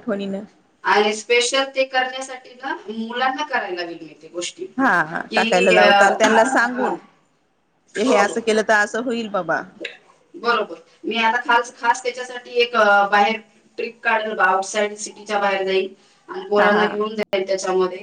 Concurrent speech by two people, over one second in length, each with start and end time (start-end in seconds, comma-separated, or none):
none